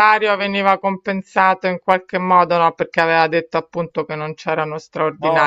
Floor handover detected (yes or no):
yes